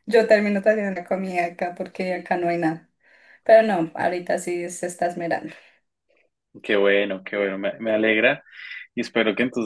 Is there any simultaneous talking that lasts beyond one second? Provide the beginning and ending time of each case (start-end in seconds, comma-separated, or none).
none